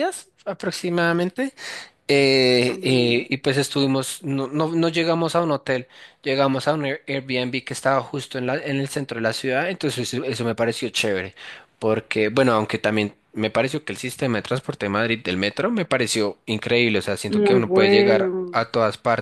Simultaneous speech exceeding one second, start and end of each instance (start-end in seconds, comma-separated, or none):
17.3-18.7